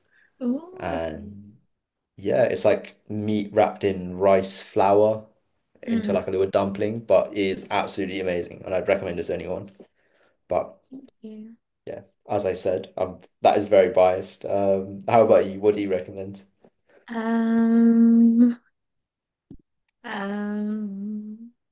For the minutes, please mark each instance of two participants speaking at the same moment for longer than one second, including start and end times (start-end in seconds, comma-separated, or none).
none